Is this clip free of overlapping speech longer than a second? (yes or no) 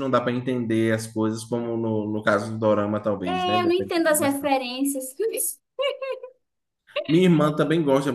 no